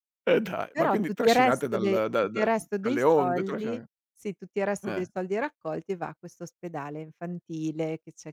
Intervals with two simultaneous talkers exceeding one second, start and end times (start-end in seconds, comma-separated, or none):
0.7-3.8